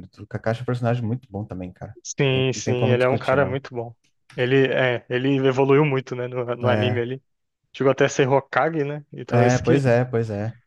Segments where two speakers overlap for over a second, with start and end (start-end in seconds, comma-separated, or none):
2.0-3.6